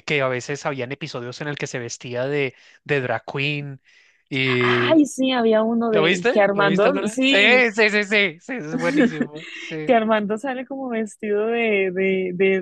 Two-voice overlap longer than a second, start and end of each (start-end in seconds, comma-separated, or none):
5.9-7.3